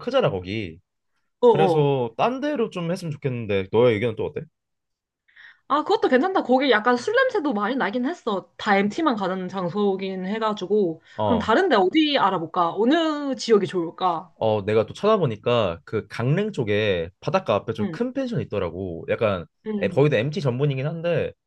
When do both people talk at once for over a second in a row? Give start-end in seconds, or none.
none